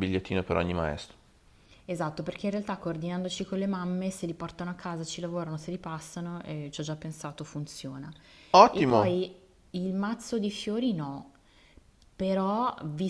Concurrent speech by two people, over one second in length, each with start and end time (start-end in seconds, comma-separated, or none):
none